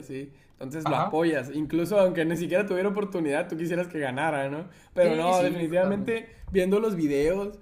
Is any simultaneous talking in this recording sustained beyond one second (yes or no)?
yes